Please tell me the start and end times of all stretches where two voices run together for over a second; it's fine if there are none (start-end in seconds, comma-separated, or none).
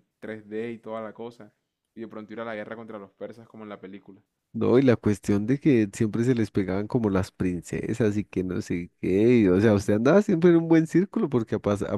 none